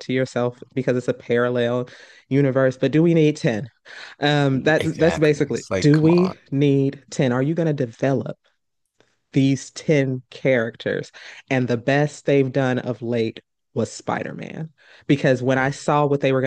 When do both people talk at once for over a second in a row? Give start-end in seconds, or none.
4.8-6.4